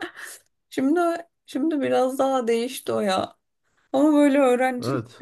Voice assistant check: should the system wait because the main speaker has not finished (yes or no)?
yes